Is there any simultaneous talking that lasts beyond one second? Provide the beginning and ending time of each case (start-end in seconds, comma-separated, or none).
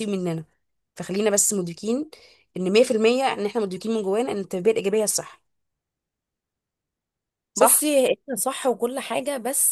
none